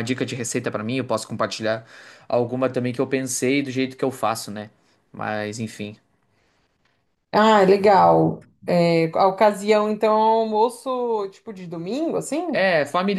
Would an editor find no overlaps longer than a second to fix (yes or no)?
yes